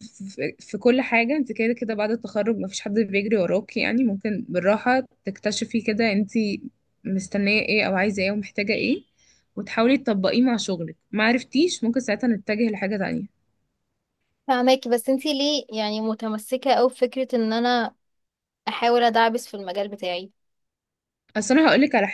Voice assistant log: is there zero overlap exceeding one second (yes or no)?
yes